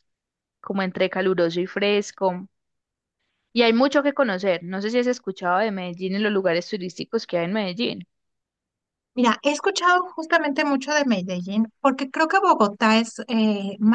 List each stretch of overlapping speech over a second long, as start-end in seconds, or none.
none